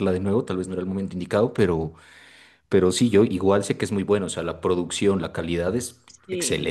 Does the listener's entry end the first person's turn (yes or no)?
yes